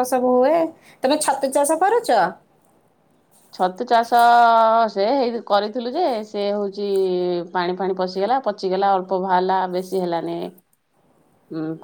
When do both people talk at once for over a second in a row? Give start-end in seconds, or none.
none